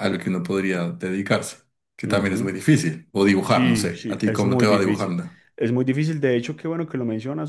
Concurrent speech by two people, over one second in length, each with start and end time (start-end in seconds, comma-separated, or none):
3.4-5.2